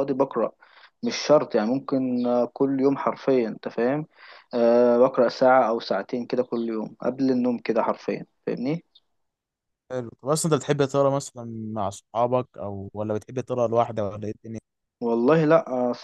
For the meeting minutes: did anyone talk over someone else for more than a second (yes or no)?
no